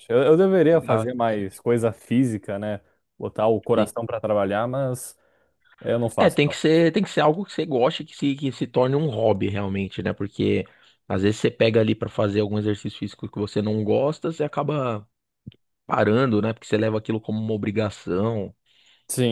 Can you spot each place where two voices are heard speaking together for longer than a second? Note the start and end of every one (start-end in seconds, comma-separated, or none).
none